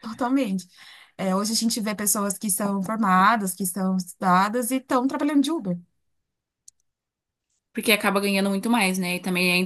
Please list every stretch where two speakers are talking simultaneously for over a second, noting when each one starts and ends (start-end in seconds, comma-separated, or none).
none